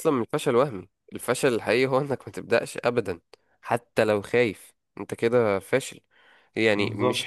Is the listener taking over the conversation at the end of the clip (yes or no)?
no